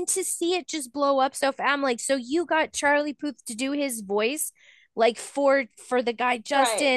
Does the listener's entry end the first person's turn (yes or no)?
no